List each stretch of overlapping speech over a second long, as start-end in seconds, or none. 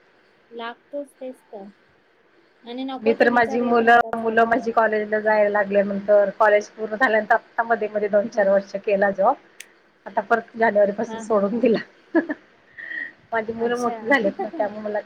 3.1-4.9